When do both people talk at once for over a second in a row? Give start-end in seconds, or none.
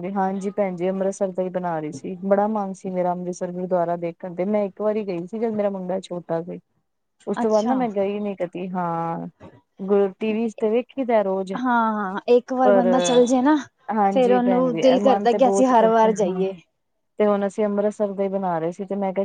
14.1-16.4